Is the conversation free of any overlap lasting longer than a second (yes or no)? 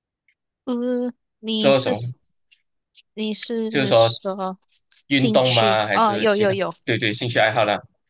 no